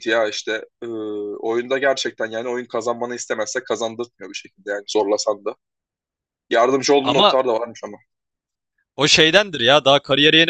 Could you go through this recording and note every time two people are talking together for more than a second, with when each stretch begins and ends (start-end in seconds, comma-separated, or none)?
none